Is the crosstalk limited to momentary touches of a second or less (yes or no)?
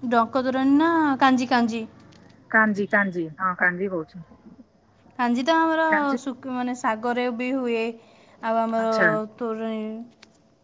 yes